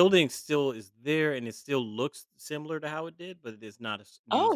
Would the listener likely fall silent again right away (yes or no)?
no